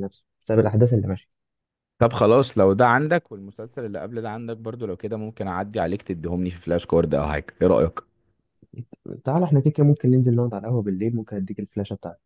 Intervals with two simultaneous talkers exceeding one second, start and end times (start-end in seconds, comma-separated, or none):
none